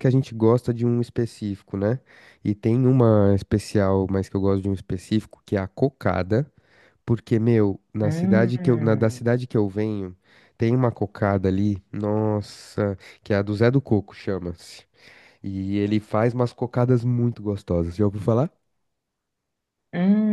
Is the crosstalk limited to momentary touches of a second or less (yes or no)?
no